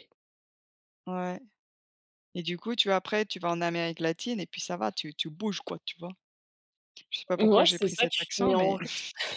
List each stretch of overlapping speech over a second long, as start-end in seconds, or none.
7.3-8.8